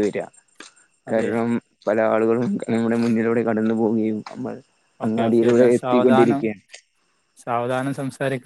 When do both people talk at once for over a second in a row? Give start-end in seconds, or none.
5.1-6.4